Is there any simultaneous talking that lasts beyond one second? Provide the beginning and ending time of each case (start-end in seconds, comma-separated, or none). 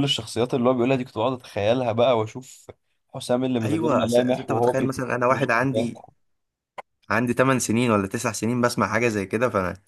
3.6-5.0